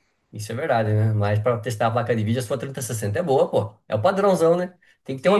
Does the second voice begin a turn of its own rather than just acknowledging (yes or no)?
yes